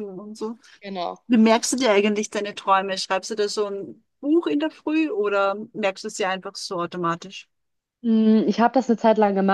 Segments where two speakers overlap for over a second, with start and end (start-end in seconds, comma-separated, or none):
none